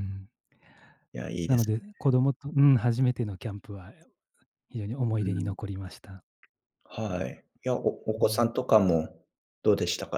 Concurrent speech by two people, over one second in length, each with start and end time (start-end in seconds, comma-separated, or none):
none